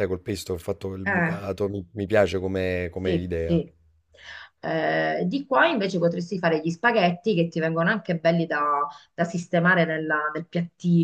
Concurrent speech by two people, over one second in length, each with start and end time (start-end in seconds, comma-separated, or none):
none